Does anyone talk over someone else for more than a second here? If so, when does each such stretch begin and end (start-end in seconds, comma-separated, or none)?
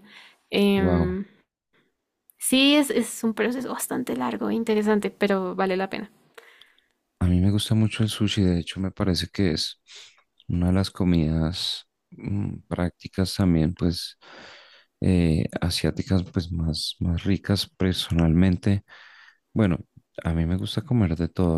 none